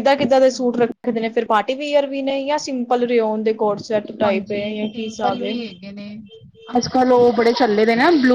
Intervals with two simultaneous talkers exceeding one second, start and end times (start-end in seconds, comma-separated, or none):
4.2-5.5